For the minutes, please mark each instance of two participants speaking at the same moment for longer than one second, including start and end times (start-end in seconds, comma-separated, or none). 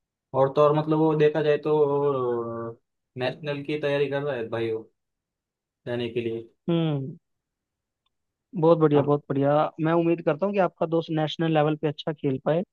none